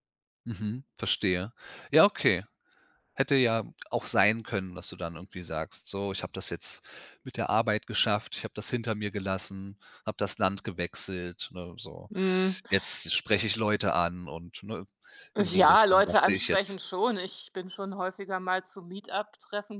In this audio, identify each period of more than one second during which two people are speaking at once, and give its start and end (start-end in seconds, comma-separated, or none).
15.4-16.8